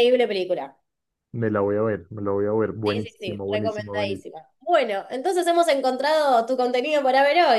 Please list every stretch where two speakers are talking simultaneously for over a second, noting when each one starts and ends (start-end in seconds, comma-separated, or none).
2.9-4.3